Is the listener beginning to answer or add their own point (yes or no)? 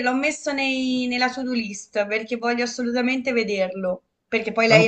no